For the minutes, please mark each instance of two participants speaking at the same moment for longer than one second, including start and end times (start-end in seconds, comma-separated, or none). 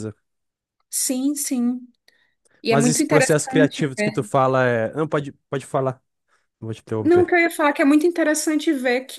2.7-4.1